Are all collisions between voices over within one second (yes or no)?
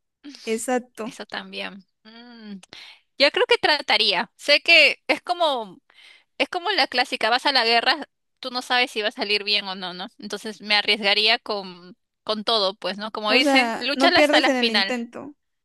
no